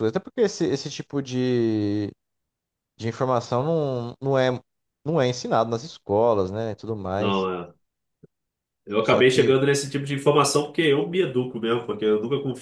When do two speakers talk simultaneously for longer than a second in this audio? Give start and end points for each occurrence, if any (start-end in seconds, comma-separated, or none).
none